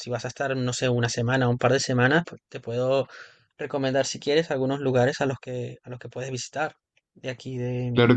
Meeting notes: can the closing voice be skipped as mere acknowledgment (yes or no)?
no